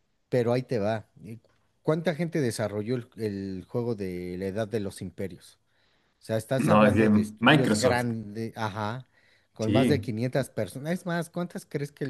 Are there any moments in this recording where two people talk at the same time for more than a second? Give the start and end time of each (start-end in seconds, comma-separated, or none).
6.6-8.1